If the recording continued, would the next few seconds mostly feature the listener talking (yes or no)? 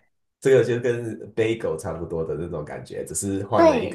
yes